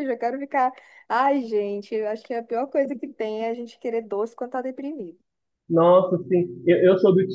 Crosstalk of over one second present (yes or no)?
no